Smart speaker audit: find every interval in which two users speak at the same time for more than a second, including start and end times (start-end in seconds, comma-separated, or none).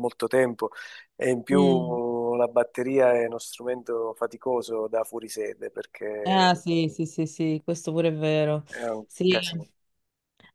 none